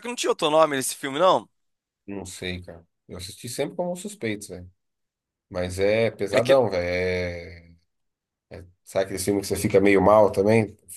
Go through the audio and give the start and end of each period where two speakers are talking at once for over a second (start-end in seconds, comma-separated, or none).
none